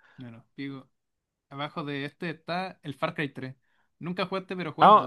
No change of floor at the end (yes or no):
no